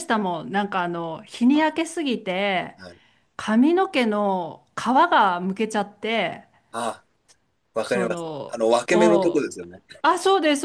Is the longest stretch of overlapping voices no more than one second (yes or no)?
no